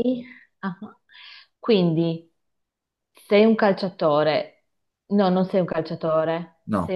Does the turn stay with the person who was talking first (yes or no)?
yes